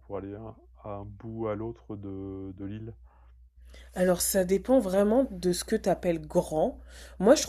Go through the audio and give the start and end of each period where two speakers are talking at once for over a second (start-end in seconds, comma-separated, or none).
none